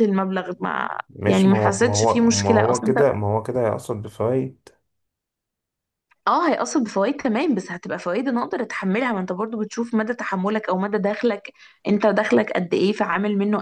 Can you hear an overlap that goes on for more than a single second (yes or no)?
yes